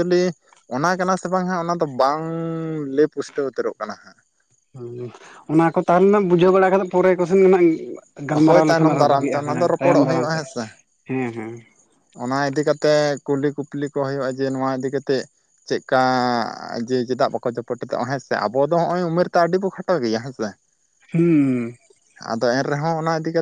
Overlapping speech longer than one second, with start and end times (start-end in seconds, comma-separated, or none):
8.5-10.6